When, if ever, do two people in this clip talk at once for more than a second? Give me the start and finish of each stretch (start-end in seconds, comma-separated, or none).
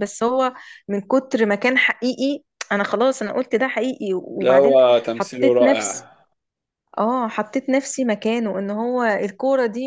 4.4-6.1